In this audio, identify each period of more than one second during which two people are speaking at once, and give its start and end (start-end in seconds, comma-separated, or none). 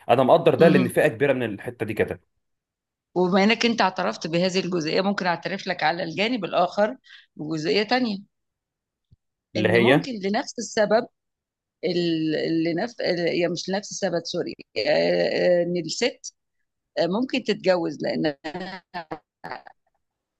none